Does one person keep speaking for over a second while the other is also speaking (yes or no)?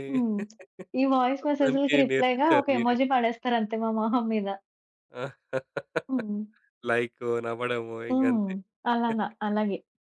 yes